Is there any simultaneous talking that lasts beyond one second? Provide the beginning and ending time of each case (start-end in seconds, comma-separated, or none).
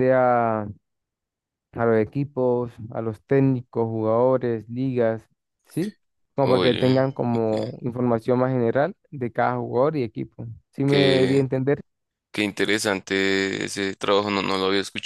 6.4-7.8